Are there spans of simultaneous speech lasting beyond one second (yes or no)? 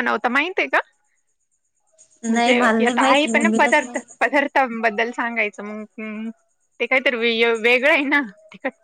yes